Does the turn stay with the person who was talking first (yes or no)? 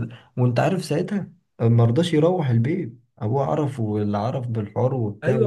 no